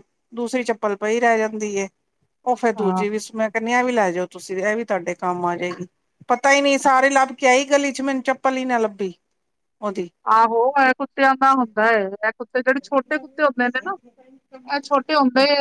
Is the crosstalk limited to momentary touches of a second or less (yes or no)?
yes